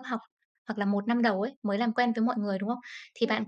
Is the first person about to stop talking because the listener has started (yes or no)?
no